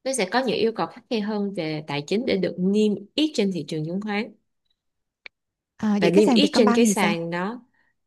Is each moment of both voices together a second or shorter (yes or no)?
no